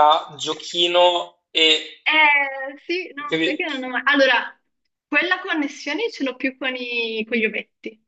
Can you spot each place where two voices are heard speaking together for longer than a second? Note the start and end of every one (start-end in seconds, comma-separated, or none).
none